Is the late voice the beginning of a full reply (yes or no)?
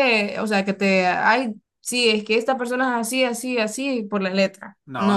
yes